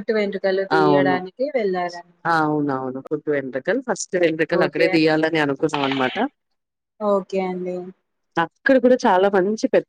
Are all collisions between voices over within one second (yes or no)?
yes